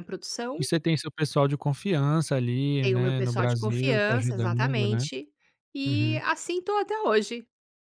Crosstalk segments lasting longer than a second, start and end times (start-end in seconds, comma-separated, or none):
2.8-5.1